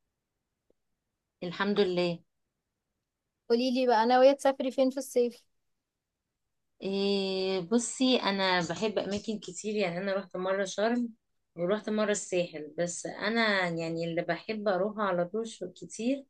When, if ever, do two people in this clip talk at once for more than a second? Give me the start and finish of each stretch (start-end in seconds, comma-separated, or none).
none